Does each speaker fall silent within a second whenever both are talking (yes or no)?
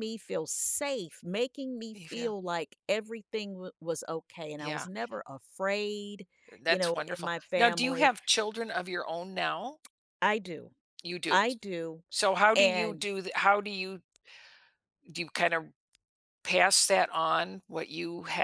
no